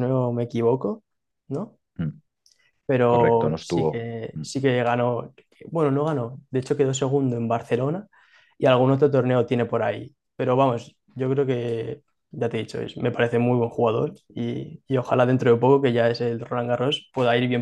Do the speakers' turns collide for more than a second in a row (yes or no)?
yes